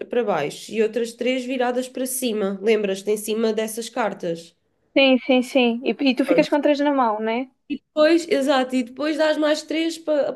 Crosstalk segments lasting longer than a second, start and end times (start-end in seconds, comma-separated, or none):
none